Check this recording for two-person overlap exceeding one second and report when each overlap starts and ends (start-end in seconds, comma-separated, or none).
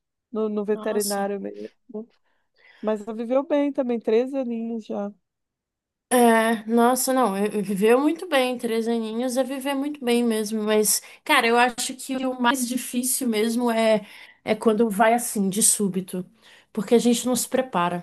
none